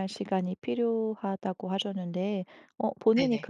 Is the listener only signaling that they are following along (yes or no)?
yes